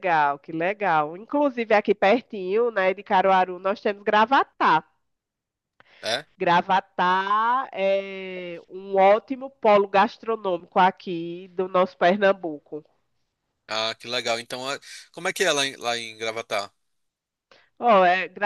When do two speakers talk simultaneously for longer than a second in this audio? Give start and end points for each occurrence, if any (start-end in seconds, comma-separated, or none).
none